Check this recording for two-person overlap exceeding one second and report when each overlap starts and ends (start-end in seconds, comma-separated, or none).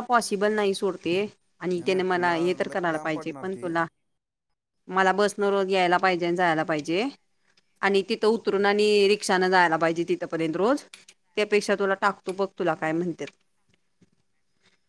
1.8-3.7